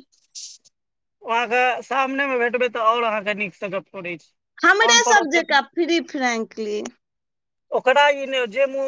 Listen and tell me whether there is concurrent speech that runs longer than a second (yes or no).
no